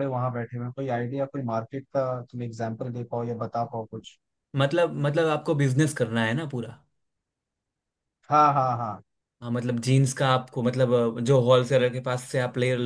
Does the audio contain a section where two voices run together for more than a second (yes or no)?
no